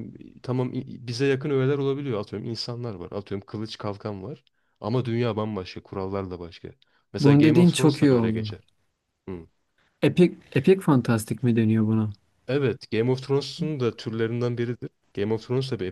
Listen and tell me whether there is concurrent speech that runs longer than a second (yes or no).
yes